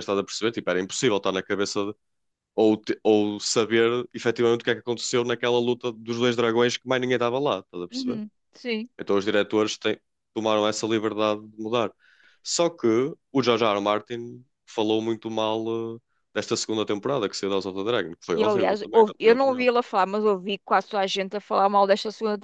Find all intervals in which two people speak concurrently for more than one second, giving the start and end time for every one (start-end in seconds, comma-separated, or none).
18.4-19.7